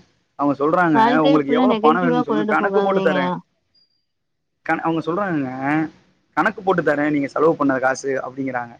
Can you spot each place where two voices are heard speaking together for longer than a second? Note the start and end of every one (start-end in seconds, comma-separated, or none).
1.0-3.2